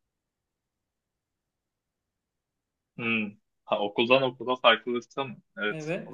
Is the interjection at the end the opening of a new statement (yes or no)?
yes